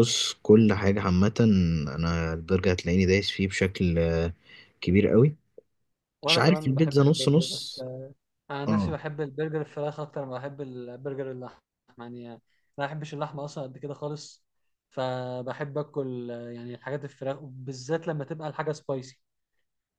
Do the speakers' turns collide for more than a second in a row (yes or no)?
yes